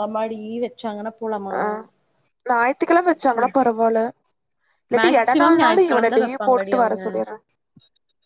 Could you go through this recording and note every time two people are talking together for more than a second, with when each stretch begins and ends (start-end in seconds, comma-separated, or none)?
5.0-7.0